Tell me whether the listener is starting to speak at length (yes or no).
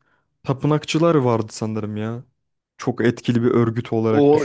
yes